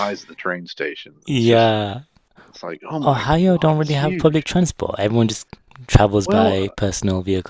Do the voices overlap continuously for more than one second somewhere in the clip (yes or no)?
yes